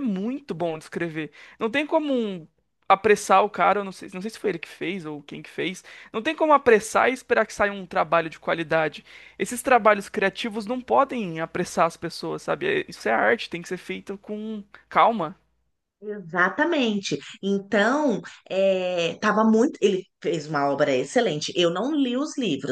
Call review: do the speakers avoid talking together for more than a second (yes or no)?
yes